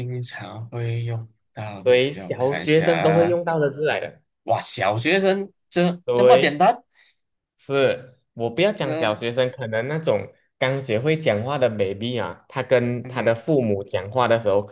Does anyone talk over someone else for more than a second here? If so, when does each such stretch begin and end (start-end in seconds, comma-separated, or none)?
1.8-3.4